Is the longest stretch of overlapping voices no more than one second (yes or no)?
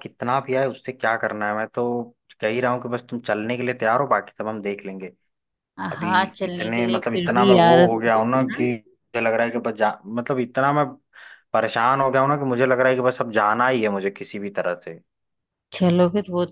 no